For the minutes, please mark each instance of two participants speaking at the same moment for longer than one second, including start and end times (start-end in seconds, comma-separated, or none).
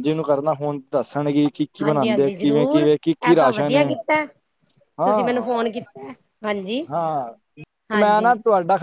1.8-3.8